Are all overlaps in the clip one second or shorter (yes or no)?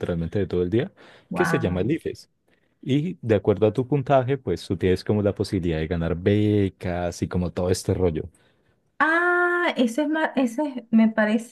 yes